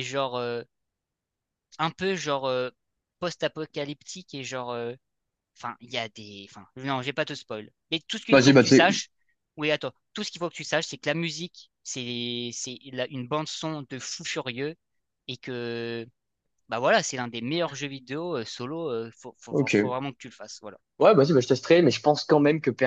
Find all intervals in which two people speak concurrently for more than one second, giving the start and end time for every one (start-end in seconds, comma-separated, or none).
none